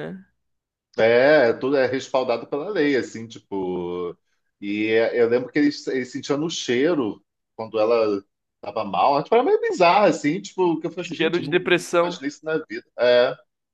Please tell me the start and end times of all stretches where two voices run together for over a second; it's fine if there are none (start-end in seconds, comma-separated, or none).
10.9-12.2